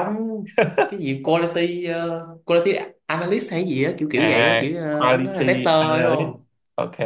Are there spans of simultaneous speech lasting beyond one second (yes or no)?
yes